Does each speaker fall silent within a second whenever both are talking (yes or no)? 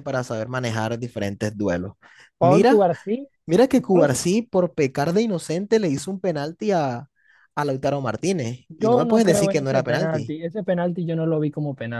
no